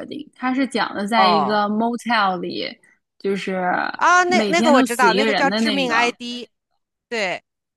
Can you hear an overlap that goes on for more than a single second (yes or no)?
yes